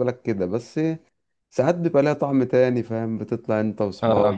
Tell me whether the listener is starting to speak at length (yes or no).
no